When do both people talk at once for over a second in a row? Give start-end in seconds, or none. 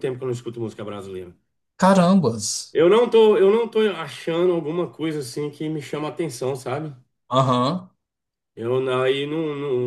none